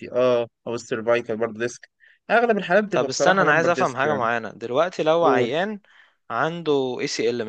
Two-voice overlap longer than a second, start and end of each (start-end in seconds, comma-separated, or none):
2.9-4.3